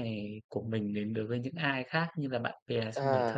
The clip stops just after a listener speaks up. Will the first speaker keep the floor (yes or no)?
no